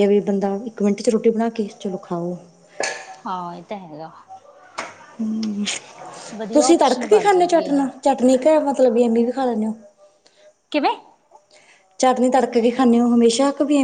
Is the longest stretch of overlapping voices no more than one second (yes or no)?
no